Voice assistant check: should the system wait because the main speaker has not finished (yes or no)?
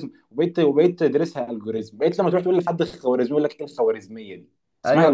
no